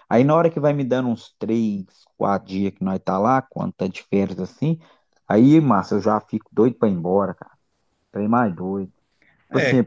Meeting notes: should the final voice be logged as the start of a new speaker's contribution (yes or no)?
yes